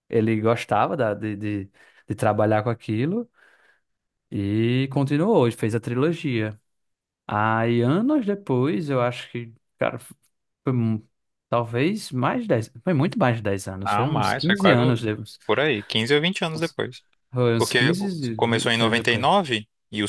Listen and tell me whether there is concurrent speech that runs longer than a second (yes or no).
yes